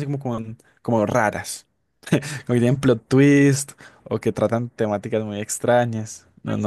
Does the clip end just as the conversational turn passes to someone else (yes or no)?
yes